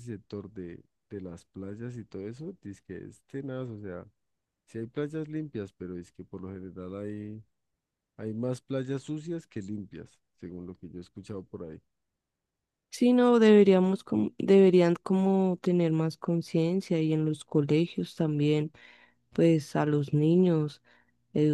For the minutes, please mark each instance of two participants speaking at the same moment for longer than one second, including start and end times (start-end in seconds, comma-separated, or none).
none